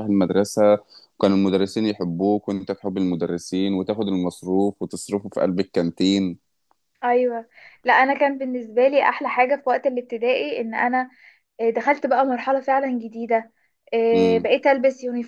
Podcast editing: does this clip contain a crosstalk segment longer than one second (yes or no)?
no